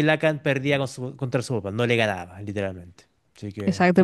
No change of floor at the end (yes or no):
no